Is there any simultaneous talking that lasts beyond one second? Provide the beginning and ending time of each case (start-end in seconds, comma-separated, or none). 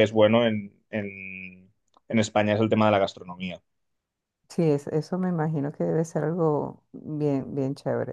none